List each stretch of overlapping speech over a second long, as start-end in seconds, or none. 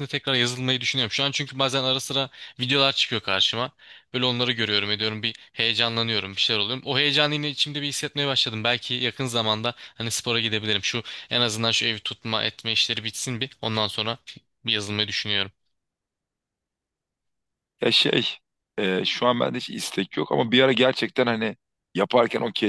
none